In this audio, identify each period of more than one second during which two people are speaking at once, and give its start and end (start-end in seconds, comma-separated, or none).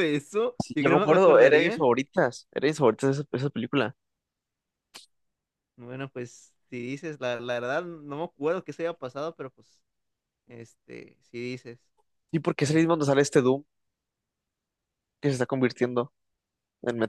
0.6-1.9